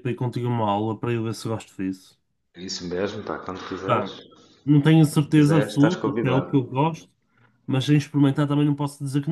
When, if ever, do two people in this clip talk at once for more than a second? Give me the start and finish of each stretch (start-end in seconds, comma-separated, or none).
5.2-6.5